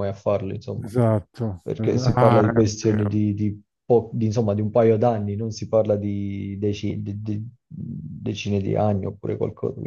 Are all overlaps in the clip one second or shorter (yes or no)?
no